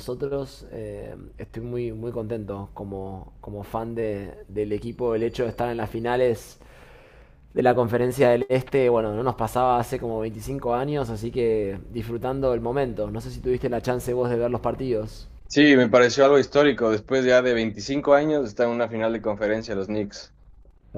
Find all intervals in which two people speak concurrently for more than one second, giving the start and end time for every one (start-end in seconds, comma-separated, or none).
none